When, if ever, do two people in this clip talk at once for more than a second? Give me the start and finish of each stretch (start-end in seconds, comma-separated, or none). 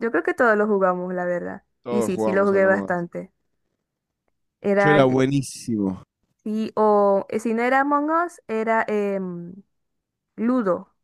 1.8-3.0